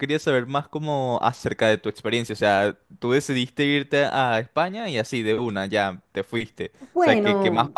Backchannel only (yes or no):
yes